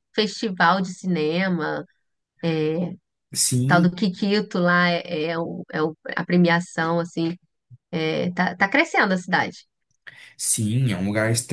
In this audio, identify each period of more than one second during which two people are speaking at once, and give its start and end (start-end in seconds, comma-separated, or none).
none